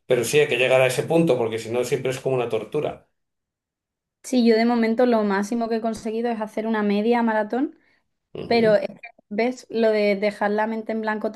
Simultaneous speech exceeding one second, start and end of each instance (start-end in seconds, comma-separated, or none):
none